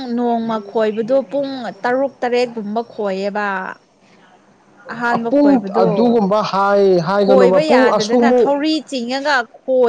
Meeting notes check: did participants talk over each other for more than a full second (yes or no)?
yes